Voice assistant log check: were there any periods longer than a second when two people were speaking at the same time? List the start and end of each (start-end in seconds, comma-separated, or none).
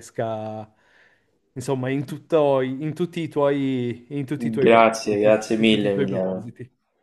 4.6-6.5